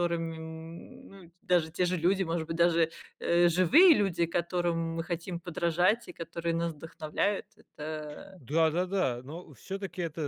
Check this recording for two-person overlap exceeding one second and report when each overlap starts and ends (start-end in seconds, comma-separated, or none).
none